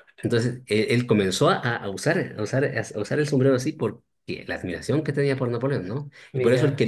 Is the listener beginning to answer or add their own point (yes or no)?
no